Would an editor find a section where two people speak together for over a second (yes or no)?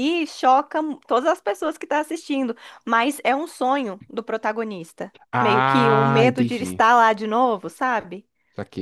yes